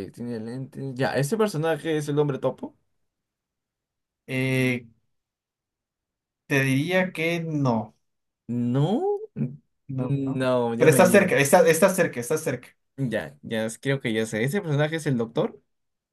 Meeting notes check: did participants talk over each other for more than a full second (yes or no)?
yes